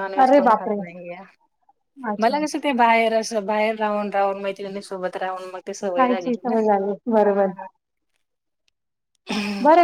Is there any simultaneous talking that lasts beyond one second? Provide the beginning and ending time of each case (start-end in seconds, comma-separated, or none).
none